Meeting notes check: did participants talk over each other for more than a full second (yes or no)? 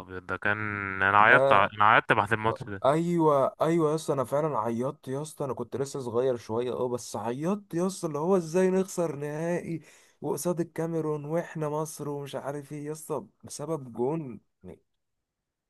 no